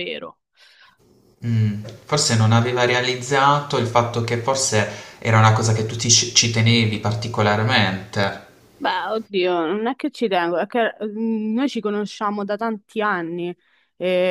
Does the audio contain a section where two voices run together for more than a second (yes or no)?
no